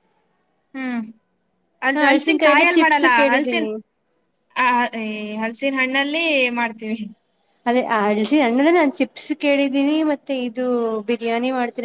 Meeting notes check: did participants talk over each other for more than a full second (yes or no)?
yes